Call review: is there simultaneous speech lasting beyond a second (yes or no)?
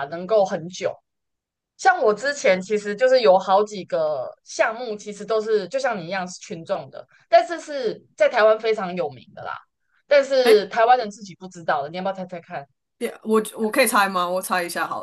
no